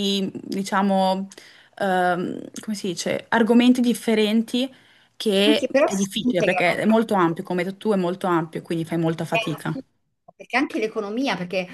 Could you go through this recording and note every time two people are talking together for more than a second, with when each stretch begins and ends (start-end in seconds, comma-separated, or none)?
5.4-6.8